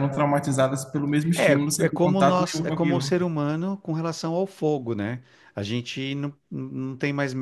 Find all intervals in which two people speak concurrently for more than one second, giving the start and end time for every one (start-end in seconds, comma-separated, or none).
1.3-3.1